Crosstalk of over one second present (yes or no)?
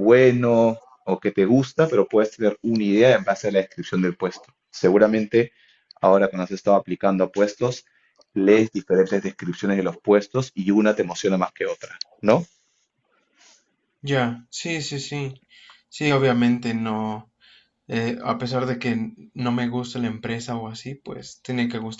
no